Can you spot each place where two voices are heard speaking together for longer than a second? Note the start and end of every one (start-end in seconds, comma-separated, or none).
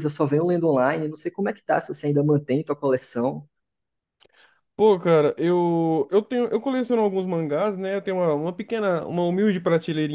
none